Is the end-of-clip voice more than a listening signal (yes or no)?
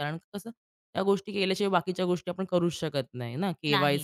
no